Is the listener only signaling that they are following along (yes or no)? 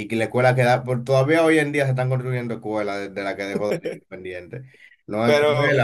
yes